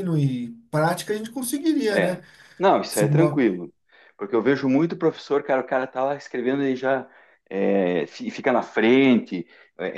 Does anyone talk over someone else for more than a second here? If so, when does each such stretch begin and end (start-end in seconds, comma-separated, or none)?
none